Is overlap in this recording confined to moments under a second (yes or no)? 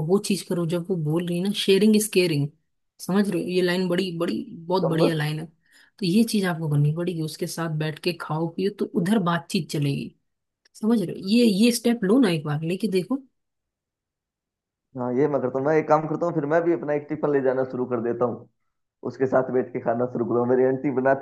yes